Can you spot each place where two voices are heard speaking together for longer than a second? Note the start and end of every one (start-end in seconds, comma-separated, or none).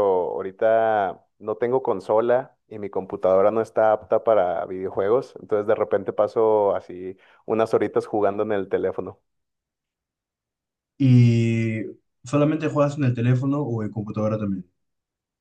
none